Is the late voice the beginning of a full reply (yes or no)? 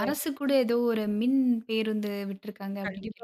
yes